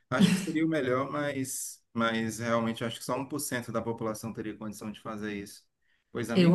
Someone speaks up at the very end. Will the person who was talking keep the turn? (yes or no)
yes